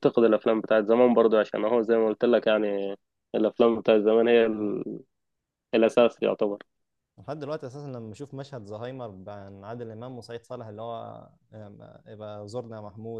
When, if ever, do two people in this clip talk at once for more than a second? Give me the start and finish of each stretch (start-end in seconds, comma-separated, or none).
none